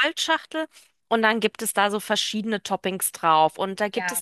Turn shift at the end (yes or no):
no